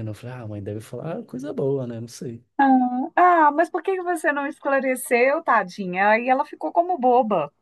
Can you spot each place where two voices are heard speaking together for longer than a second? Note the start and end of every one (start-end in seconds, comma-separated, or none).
none